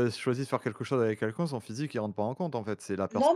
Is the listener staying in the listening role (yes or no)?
no